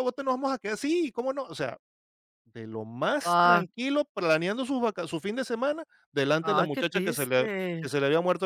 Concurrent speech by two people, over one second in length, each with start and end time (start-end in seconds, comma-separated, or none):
6.4-7.9